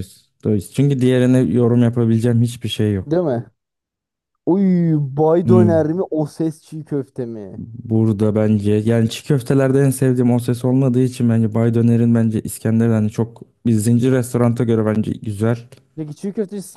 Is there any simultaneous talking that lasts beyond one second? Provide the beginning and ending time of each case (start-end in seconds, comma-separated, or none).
none